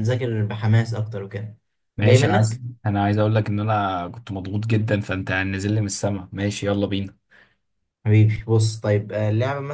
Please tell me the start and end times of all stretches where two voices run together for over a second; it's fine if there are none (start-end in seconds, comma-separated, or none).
none